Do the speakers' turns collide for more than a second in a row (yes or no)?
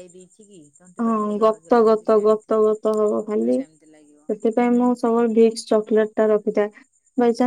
yes